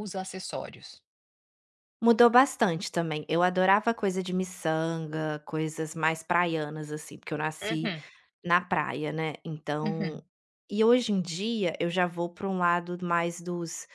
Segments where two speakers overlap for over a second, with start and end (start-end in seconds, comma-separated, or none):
none